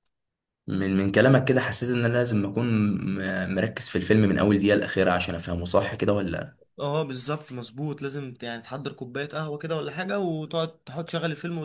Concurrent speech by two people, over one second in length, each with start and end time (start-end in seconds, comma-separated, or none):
none